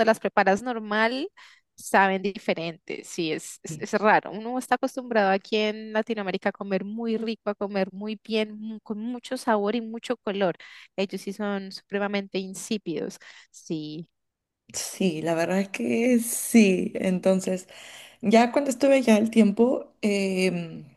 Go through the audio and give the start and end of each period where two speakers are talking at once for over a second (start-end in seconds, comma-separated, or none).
none